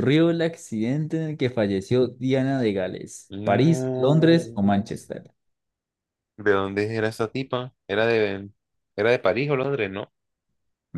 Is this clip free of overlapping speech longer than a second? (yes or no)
no